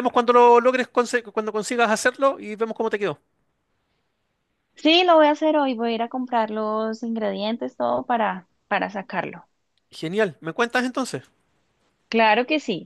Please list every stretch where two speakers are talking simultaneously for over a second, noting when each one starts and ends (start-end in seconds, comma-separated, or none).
none